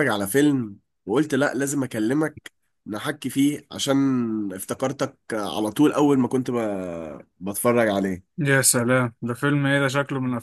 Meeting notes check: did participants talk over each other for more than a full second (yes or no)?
no